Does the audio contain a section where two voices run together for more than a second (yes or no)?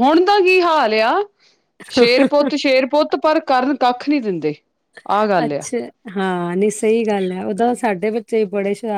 no